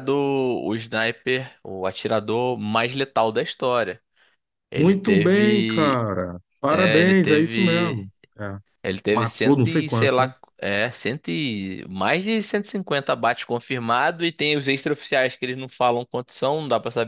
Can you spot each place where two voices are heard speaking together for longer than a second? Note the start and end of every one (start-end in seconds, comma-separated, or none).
4.7-6.0, 6.7-8.1, 9.1-10.3